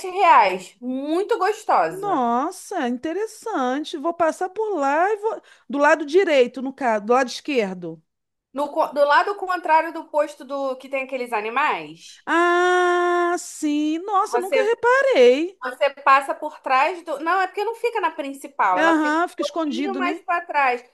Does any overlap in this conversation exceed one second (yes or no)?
yes